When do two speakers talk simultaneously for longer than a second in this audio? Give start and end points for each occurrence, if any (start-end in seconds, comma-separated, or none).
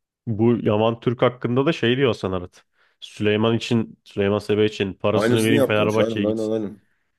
5.1-6.5